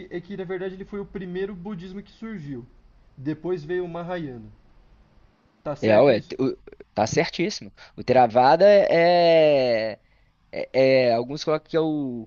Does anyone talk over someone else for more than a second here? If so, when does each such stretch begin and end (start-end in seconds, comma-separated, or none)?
none